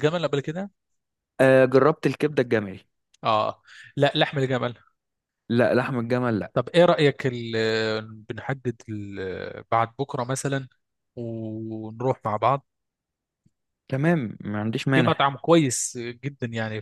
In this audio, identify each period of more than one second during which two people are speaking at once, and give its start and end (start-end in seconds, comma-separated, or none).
none